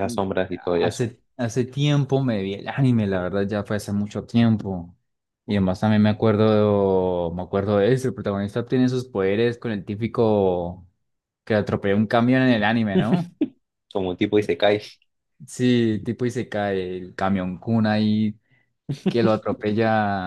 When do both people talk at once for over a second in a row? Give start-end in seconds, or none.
none